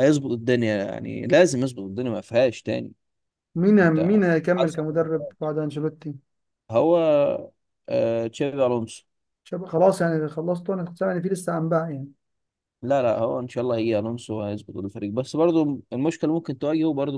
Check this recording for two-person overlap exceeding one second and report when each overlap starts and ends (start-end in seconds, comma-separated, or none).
3.8-5.6